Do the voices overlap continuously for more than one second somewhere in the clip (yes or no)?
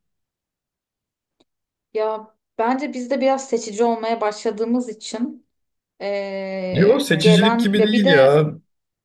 yes